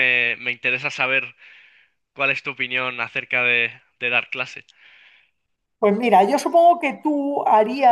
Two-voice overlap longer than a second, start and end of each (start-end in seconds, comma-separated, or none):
none